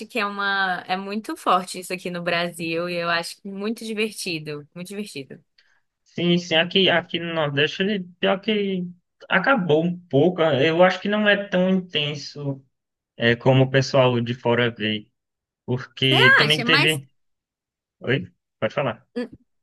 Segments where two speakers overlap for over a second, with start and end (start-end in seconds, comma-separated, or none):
none